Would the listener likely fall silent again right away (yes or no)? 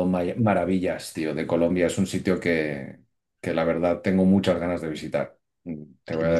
no